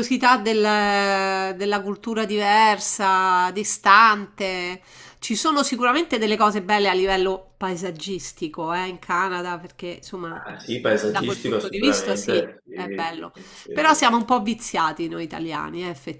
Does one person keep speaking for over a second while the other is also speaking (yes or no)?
yes